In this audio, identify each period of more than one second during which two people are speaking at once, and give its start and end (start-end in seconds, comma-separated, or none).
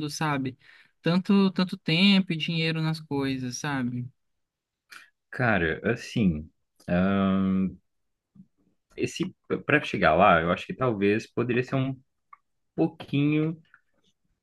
none